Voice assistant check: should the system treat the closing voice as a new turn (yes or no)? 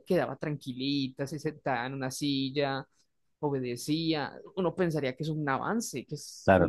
yes